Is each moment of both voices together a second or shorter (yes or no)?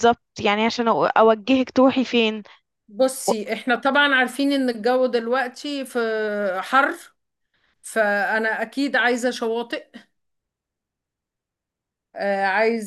yes